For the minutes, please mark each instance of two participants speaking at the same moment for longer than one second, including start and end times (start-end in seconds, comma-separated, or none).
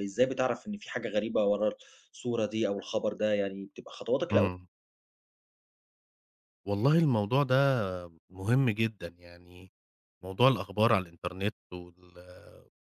none